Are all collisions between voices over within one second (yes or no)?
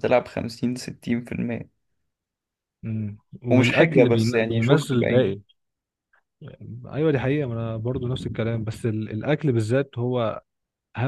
no